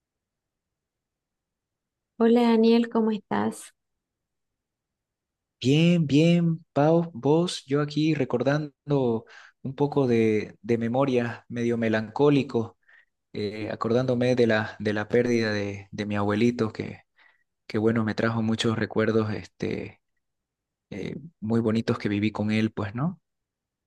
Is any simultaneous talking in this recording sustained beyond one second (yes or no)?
no